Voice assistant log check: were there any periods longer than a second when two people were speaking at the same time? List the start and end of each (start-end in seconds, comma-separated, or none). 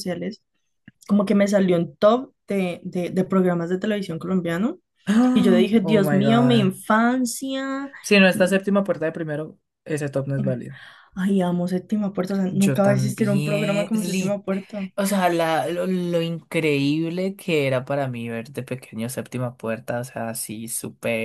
5.3-6.8, 12.5-14.4